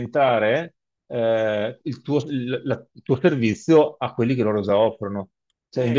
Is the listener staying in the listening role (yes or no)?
yes